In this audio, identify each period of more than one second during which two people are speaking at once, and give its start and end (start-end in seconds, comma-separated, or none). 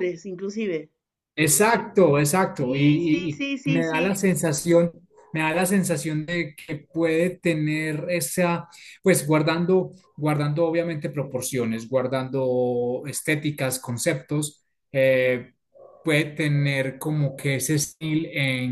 2.6-4.2